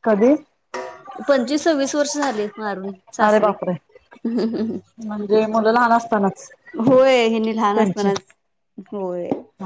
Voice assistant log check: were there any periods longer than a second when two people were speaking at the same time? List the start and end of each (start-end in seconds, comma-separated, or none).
none